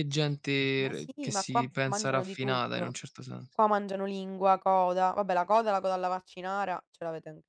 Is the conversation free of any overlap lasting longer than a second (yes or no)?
no